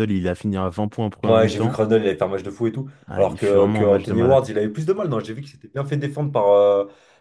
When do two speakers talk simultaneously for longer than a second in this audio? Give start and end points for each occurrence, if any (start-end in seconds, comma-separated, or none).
3.1-4.5